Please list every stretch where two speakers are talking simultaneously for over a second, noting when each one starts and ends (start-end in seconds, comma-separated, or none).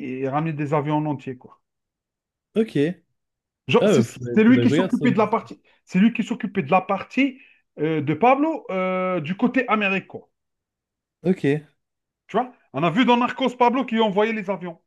3.8-5.1